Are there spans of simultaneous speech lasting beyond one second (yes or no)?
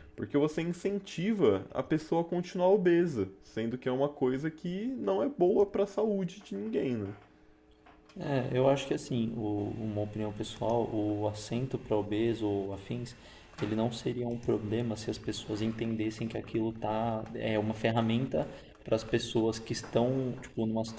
no